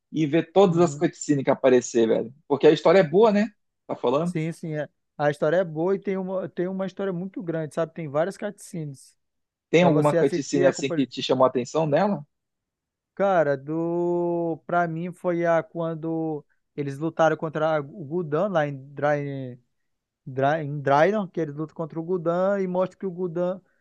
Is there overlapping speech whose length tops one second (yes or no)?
yes